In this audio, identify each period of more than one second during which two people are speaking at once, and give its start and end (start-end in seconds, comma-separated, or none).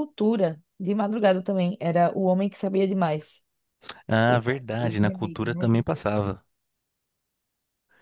4.3-5.6